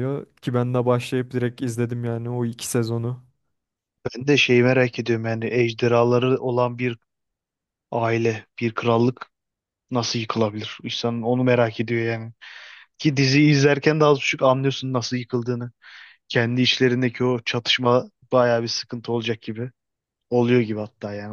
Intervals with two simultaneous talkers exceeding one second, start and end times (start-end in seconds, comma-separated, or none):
none